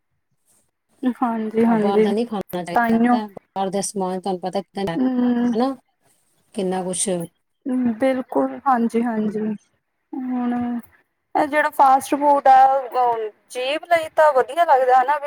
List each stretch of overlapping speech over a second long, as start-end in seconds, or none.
none